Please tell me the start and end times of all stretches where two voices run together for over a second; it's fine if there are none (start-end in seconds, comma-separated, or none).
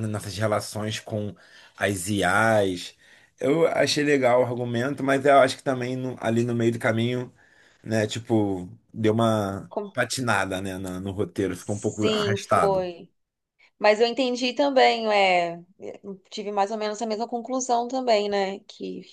11.6-12.8